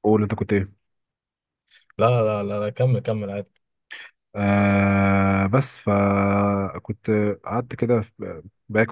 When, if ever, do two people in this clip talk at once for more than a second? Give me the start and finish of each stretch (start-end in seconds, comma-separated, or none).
none